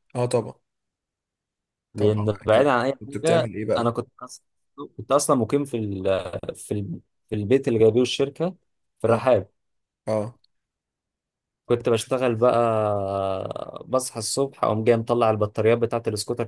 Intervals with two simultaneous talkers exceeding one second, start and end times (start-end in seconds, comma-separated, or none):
1.9-4.0